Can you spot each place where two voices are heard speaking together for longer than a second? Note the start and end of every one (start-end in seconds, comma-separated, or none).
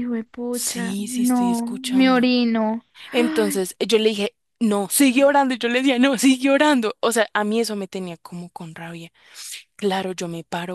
0.5-2.3